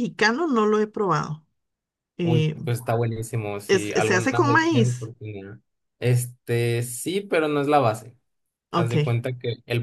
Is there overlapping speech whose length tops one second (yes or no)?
yes